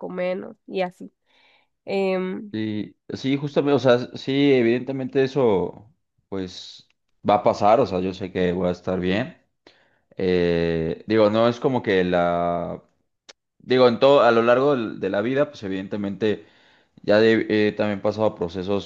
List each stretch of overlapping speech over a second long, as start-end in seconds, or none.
none